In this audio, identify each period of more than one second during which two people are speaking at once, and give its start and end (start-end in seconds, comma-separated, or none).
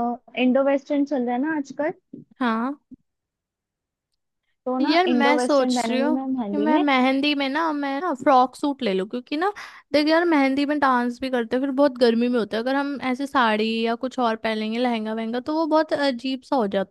4.8-6.8